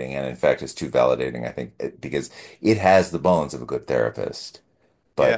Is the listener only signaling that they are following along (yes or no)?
no